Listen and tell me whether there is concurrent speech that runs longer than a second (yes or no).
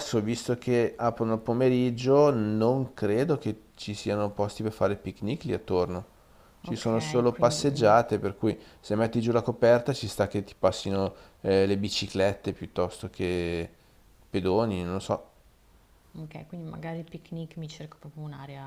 yes